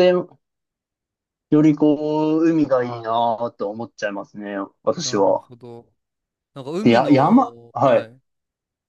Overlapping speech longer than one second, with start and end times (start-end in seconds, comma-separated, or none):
6.8-8.1